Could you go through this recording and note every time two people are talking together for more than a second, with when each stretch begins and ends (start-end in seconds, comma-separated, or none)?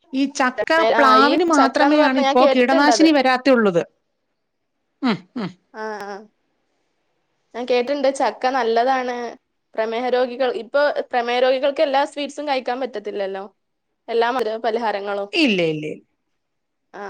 1.0-3.1